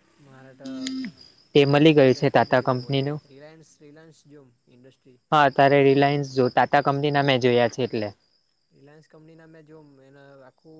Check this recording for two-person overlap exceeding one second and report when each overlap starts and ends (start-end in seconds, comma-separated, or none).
1.6-3.2